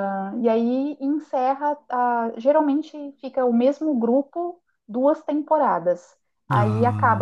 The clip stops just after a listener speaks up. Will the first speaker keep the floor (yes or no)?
yes